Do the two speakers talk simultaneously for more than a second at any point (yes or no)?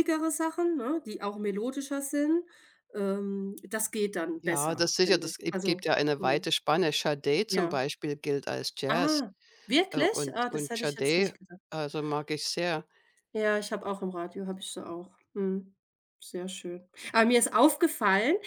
yes